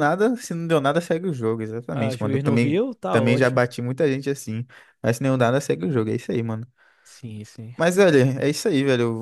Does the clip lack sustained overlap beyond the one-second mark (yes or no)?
no